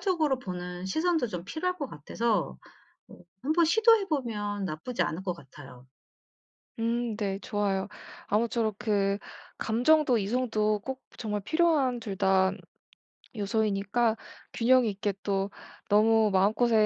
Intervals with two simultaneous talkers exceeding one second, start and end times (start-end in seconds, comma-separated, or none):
none